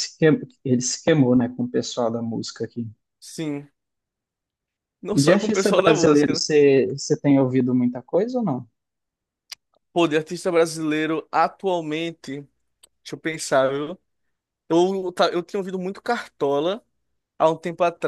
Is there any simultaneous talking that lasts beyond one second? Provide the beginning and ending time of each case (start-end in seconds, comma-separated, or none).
5.1-6.5